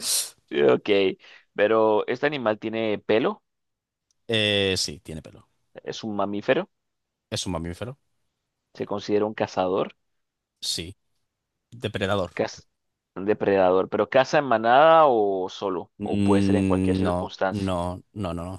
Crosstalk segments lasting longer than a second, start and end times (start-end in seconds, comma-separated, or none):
16.0-17.7